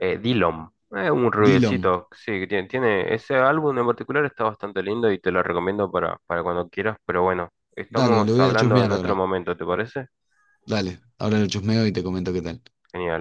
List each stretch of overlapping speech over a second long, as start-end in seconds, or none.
7.9-9.2